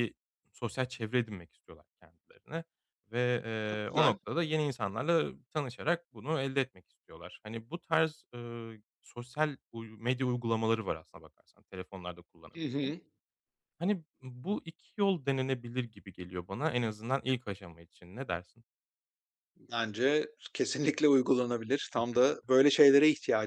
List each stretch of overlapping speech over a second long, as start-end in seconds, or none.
none